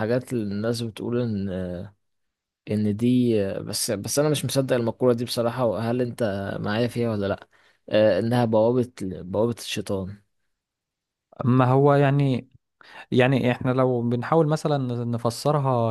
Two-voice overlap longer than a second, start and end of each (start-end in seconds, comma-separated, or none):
none